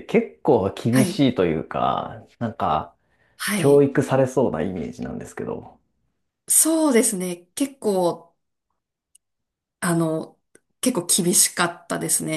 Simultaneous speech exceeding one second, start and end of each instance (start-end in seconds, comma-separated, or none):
none